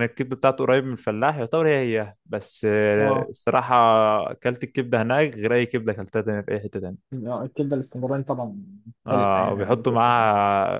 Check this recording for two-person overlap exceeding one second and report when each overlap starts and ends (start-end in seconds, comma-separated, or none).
9.1-10.3